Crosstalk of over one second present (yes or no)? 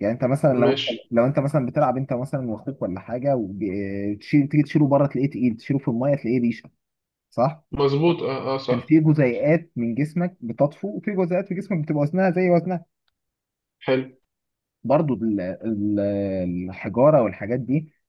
no